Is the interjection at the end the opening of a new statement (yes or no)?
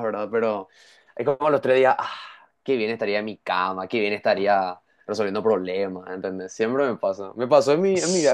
no